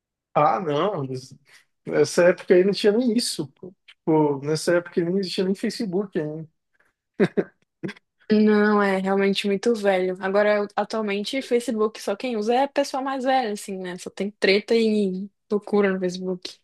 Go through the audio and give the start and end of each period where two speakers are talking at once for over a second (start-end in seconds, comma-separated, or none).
none